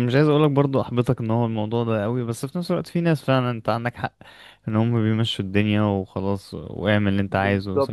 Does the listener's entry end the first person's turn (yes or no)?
yes